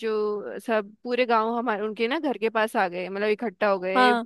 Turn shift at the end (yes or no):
no